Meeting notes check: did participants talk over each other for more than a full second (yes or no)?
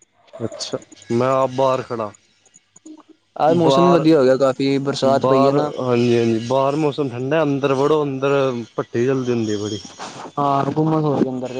no